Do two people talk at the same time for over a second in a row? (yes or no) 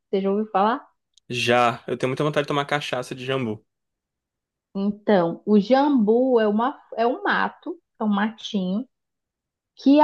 no